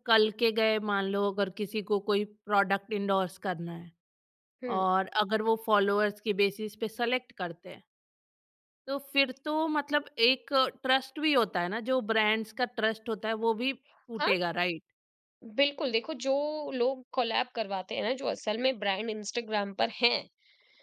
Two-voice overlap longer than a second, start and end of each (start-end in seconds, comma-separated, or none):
none